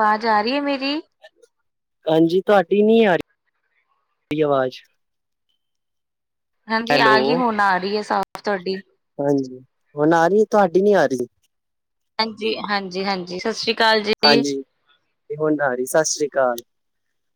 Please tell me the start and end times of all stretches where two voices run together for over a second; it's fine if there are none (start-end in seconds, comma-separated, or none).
none